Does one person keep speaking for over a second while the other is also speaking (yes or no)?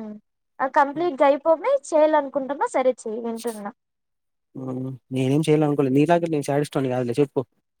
no